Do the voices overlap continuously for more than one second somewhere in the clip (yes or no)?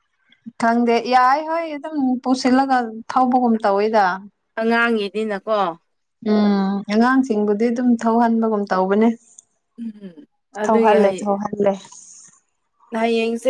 no